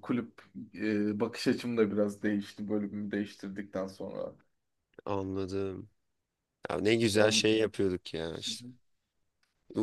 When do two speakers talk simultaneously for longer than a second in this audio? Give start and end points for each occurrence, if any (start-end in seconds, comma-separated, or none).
none